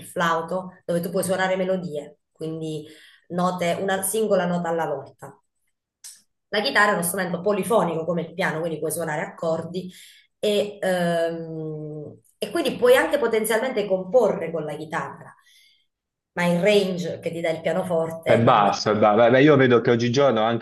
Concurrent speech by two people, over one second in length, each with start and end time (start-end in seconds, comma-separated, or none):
none